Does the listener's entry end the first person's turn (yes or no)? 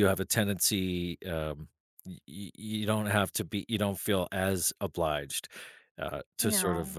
no